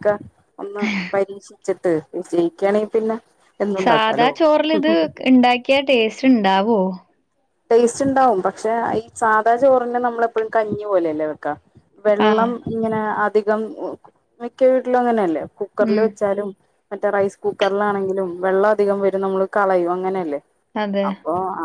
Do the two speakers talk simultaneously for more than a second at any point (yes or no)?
no